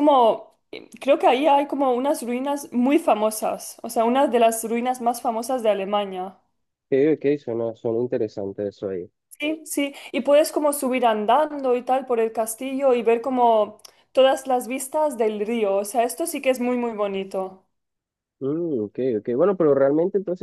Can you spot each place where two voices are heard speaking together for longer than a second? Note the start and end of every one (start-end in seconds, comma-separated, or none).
none